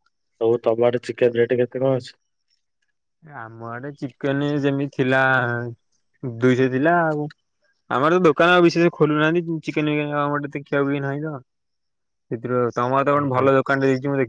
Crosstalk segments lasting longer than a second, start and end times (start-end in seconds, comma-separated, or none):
none